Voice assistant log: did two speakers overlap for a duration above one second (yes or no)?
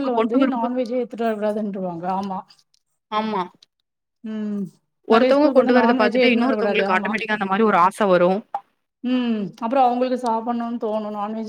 yes